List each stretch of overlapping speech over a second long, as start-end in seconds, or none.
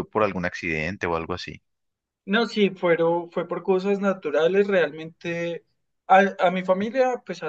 none